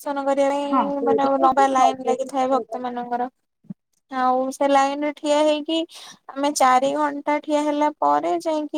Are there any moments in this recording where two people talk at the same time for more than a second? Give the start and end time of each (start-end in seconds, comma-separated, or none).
0.7-2.8